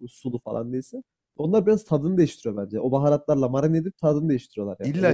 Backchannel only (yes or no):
no